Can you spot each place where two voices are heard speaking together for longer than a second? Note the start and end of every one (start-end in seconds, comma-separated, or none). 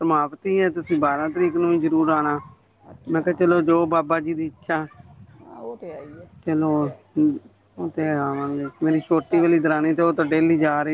none